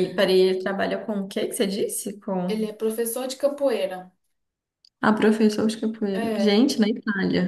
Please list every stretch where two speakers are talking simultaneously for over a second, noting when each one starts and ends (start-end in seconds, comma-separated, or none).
none